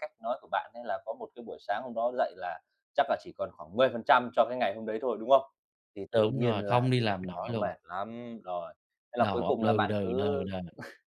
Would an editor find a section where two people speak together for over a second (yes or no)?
yes